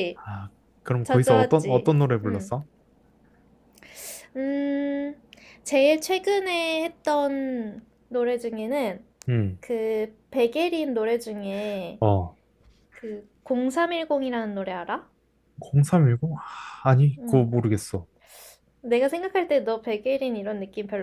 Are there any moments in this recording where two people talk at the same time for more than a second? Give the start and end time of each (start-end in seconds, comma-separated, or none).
1.0-2.5